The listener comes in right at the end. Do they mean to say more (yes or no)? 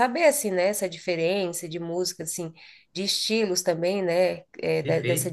no